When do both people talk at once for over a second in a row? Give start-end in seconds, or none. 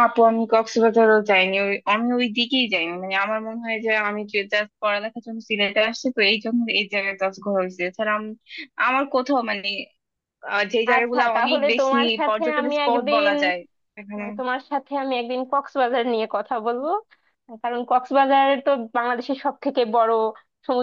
10.9-13.3